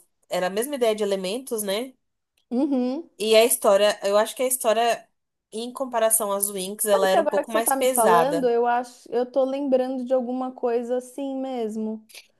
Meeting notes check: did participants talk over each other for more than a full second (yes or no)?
yes